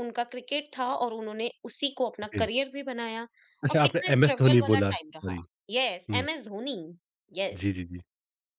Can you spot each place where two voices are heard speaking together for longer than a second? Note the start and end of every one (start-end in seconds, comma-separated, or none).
3.7-5.4